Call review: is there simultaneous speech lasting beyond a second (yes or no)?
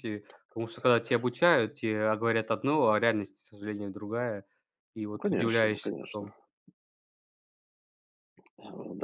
yes